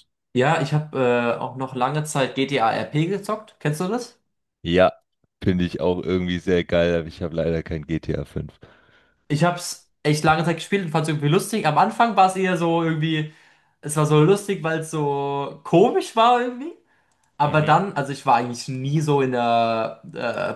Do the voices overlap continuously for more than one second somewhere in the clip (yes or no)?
no